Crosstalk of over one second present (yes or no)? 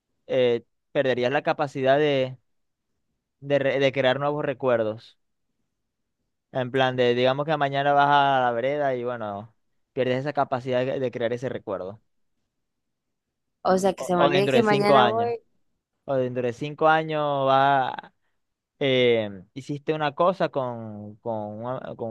yes